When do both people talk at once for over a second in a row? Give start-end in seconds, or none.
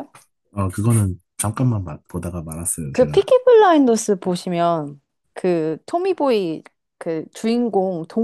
none